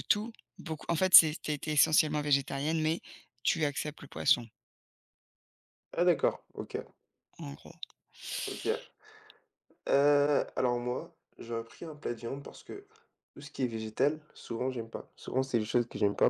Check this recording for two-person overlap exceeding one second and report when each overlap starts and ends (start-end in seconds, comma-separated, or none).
none